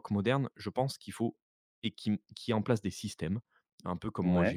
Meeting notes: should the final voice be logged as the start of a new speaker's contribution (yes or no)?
no